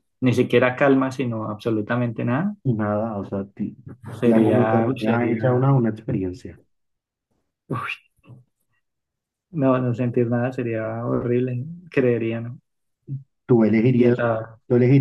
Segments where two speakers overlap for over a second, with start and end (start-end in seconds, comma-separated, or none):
4.2-5.7